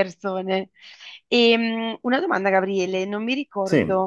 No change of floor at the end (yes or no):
yes